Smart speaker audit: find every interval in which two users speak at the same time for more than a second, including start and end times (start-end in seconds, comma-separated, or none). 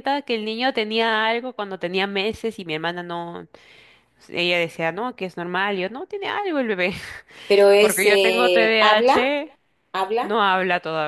7.8-9.2